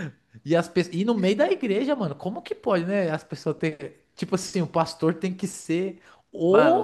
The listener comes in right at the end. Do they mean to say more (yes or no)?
no